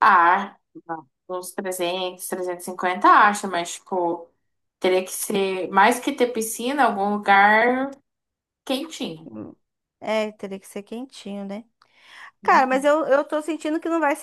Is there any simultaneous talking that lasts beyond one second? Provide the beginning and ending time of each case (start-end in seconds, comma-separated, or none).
none